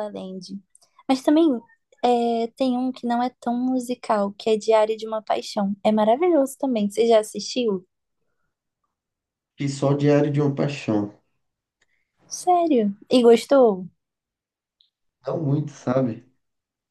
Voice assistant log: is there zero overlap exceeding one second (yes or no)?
yes